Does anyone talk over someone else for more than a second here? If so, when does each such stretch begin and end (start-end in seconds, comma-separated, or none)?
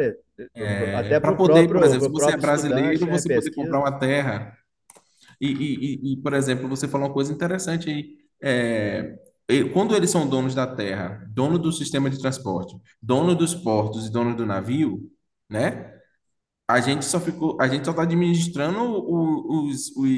0.9-3.8